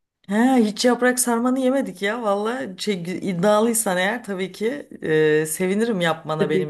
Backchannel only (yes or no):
no